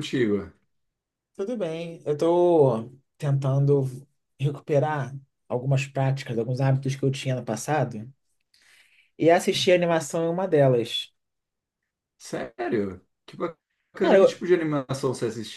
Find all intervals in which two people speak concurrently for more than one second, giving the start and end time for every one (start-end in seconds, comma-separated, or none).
none